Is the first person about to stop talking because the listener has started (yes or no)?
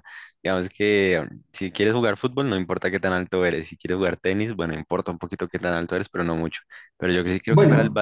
no